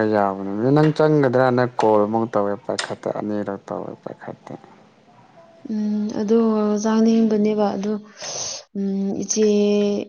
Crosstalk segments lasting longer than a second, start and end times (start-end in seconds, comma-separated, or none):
none